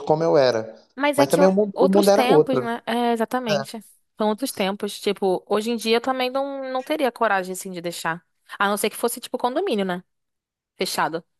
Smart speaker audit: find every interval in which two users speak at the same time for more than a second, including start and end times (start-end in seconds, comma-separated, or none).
1.1-2.7